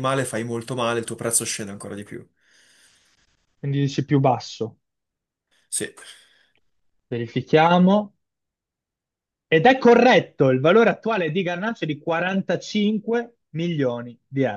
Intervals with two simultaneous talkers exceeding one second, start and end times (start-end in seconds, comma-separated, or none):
none